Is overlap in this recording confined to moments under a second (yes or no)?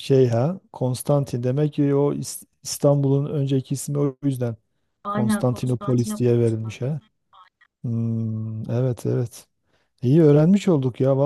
no